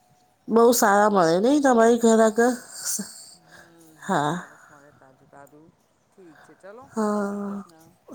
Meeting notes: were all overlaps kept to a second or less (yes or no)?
yes